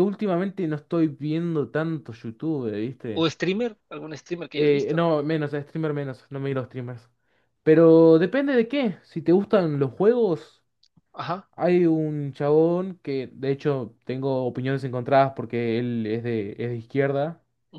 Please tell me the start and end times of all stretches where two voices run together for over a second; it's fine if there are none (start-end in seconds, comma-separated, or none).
none